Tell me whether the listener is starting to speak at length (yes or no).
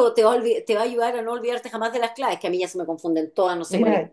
yes